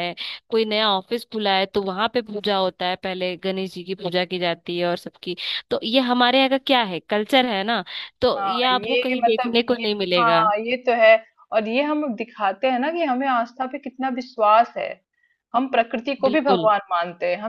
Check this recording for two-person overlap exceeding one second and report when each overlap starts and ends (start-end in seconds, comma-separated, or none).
8.4-10.4